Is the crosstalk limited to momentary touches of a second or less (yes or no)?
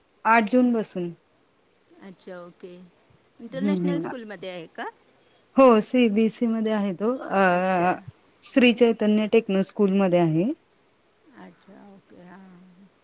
yes